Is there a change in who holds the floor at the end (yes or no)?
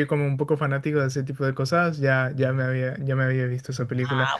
no